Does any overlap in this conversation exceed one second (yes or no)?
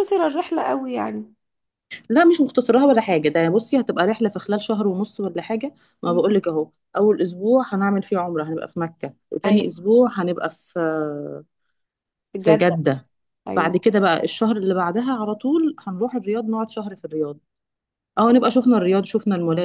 no